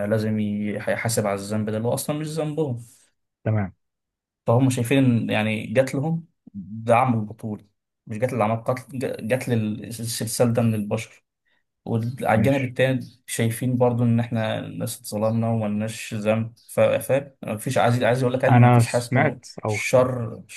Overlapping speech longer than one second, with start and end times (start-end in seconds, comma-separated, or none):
18.5-20.0